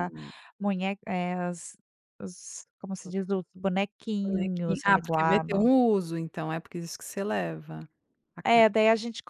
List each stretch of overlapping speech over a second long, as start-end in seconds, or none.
4.2-5.6